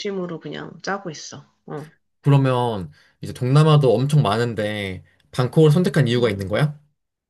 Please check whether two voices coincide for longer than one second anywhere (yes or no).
no